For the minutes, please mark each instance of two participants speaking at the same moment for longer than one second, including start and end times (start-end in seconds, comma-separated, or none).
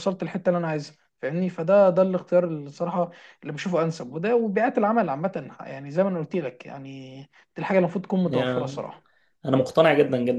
none